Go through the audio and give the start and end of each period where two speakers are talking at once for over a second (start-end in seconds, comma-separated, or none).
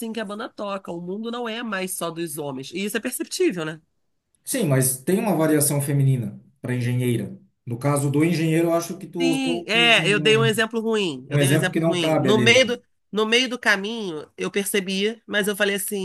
9.2-10.6, 11.3-12.8